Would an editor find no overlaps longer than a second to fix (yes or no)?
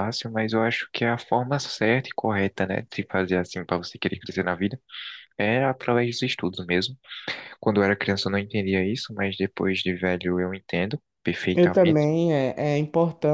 yes